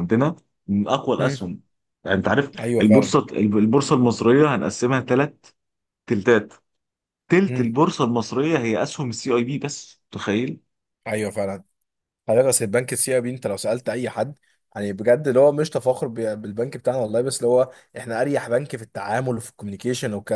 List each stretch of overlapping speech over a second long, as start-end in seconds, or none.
none